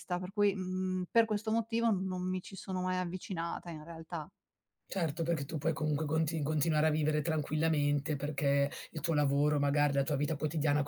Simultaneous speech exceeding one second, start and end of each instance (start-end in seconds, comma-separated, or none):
none